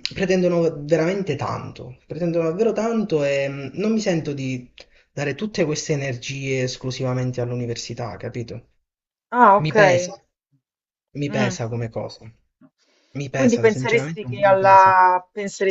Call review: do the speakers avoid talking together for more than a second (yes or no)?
no